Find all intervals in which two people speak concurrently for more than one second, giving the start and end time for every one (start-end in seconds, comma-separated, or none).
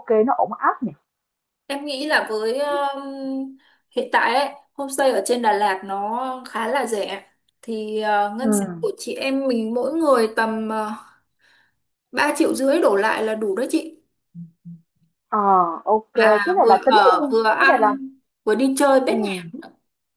16.1-17.9